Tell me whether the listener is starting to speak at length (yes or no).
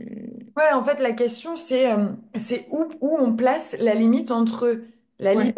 no